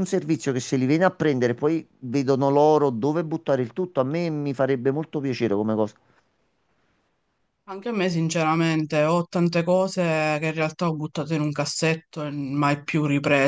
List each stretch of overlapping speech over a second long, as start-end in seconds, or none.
none